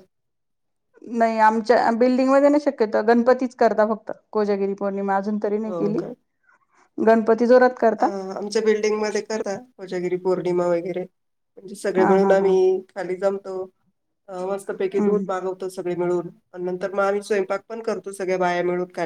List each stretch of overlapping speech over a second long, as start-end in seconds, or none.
none